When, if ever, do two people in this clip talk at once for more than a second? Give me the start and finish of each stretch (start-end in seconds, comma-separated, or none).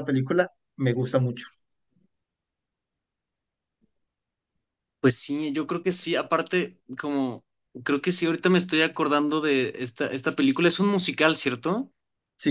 none